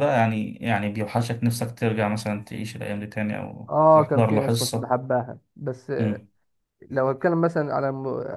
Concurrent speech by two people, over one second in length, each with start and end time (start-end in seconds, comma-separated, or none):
3.7-4.9